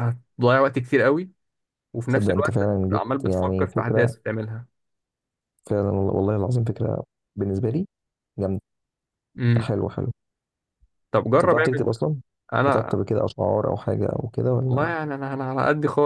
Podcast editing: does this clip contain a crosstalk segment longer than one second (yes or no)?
yes